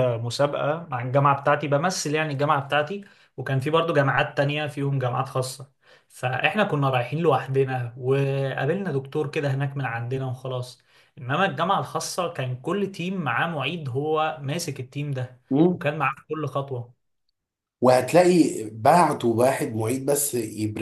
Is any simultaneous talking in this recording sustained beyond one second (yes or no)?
no